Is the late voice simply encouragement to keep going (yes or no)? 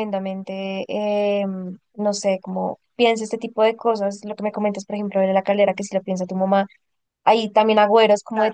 yes